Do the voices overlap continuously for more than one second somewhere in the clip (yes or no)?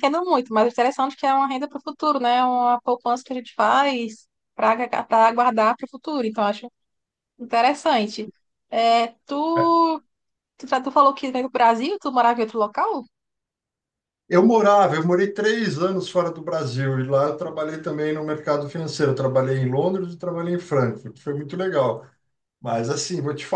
no